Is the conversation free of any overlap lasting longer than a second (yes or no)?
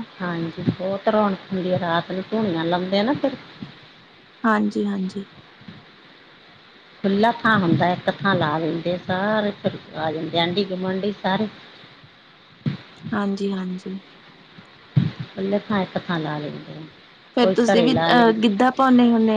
yes